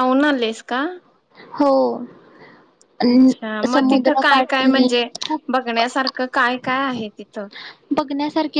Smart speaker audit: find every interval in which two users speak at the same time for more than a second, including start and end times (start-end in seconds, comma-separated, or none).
3.1-4.9